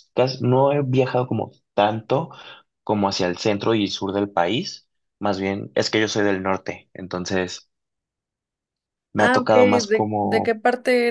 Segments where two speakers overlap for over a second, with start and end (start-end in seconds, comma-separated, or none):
9.2-10.6